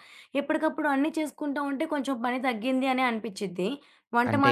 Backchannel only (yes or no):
no